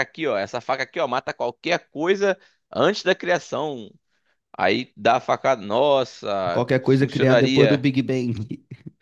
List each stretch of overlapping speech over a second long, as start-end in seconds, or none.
6.5-7.9